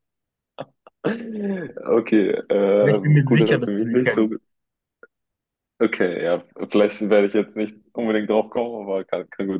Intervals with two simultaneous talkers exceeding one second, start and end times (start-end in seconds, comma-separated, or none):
2.8-4.3